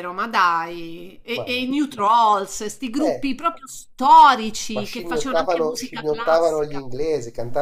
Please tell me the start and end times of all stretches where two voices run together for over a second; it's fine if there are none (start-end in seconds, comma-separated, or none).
4.7-6.8